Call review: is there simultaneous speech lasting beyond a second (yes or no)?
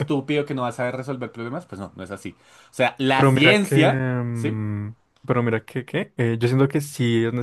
yes